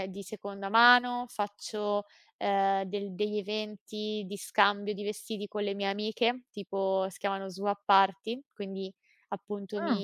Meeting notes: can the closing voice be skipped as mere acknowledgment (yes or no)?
yes